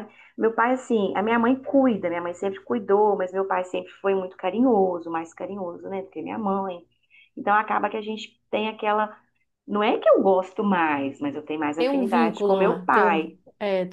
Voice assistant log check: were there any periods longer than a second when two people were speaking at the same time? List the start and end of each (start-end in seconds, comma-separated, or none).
11.8-13.2